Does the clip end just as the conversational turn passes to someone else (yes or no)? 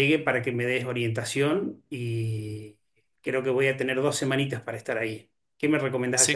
yes